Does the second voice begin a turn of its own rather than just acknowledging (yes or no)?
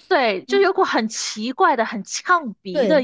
yes